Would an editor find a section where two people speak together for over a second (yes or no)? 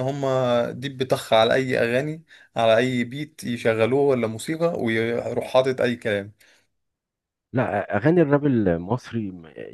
no